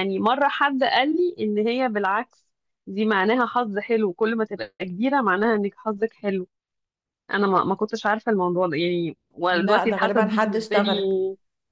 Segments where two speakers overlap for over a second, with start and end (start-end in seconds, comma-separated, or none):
9.5-11.0